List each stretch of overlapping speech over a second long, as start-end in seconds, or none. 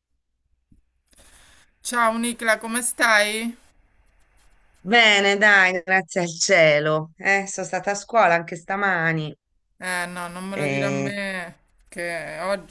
none